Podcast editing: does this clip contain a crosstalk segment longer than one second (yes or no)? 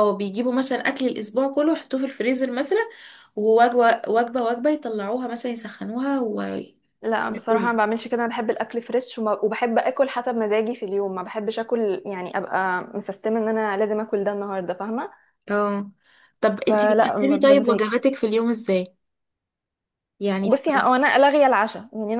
yes